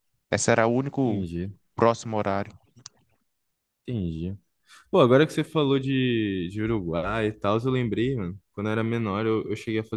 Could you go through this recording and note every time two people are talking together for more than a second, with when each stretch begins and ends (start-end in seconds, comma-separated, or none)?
none